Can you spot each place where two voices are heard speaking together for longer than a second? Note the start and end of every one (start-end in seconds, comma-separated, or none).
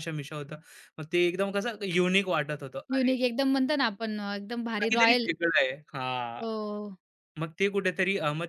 none